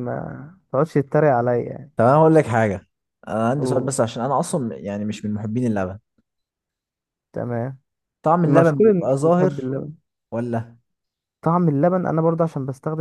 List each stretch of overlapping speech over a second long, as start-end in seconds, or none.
8.4-9.7